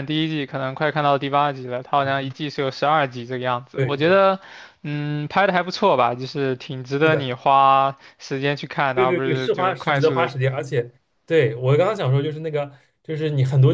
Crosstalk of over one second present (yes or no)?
yes